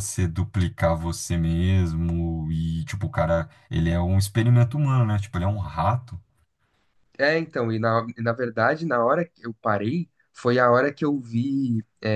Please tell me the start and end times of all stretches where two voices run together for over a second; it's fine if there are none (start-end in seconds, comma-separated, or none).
none